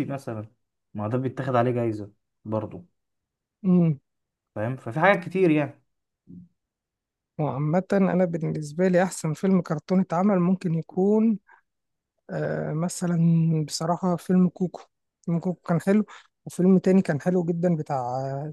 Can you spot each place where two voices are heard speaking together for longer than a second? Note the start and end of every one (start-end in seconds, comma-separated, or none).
none